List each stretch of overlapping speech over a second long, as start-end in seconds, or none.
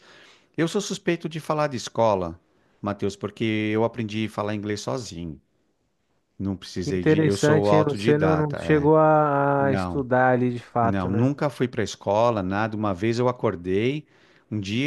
6.8-8.9